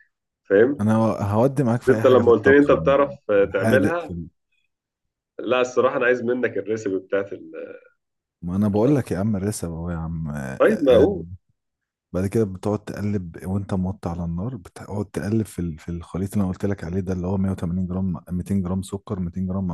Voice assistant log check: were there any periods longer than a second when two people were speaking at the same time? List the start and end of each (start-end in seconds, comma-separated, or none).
1.8-4.2